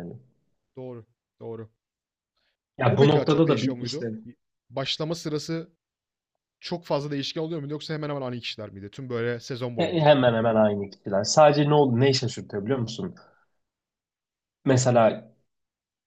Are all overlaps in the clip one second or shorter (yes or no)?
no